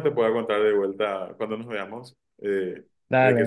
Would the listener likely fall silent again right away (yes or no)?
no